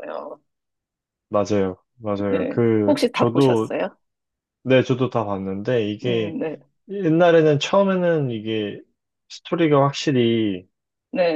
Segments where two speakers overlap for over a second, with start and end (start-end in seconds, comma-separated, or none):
2.3-3.7